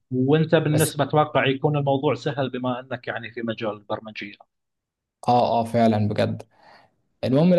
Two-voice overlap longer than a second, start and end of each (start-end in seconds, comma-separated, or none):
none